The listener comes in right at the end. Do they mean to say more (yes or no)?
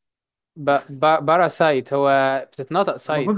yes